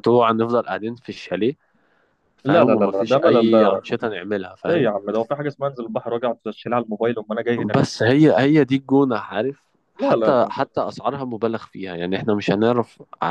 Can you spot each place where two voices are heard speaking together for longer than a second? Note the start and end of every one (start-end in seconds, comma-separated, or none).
2.4-3.9